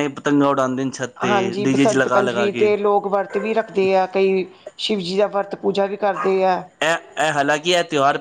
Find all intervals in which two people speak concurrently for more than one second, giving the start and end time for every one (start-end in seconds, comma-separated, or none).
1.2-2.7